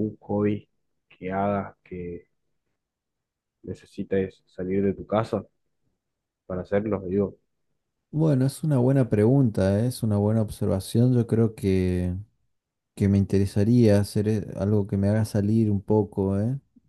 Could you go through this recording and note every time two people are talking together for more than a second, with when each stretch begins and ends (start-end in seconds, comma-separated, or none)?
none